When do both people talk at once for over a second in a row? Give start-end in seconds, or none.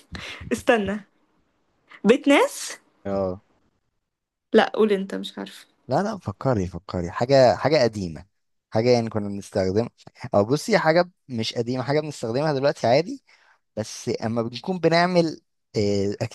none